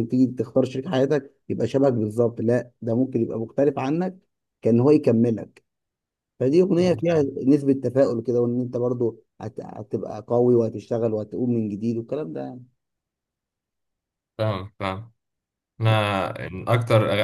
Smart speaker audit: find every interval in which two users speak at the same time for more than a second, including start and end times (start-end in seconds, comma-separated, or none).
none